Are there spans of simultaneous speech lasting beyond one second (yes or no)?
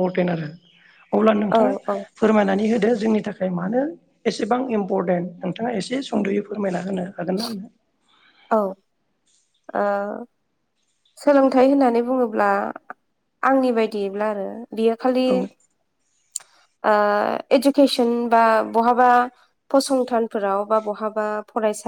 no